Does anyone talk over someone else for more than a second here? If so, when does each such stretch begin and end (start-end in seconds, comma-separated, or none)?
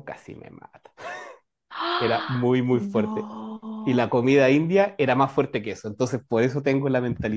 2.0-3.3